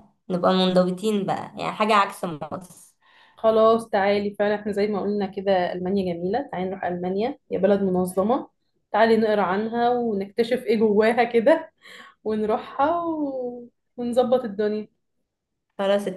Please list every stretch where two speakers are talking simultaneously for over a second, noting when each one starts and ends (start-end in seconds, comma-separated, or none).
none